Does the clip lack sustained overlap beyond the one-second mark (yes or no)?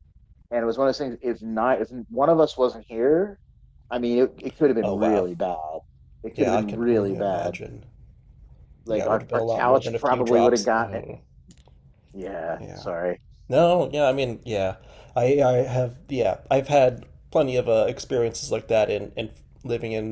no